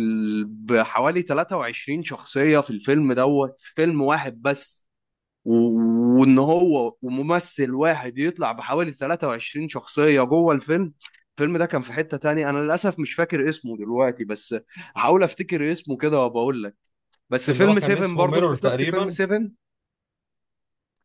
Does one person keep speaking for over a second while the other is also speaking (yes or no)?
yes